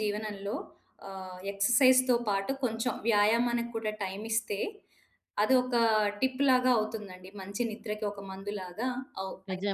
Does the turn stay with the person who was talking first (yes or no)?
no